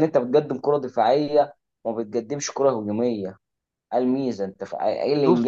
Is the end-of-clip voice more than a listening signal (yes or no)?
no